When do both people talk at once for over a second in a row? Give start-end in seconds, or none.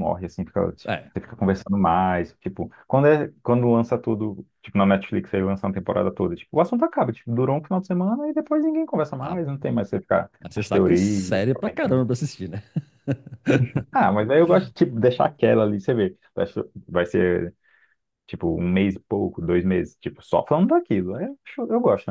10.4-12.0